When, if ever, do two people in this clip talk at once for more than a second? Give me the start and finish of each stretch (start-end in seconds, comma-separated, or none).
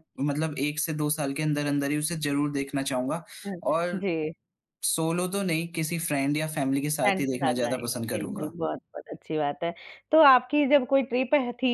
7.0-8.5